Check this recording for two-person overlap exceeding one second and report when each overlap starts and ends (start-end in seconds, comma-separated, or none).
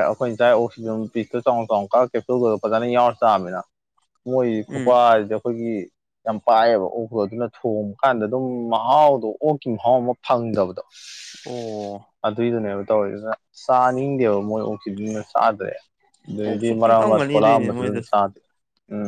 16.4-18.1